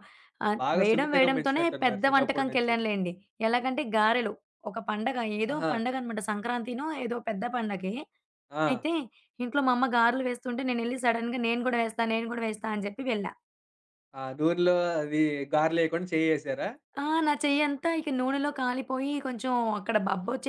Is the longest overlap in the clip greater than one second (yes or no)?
yes